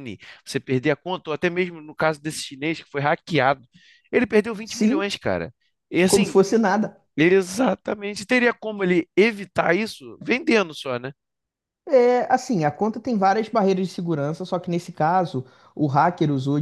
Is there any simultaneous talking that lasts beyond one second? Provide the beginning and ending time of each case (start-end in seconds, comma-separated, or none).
none